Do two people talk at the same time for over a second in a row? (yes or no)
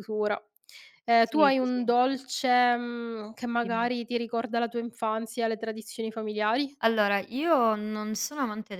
no